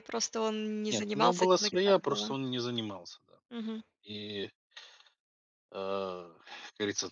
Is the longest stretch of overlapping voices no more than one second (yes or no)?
no